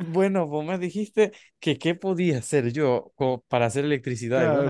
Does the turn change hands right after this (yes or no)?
yes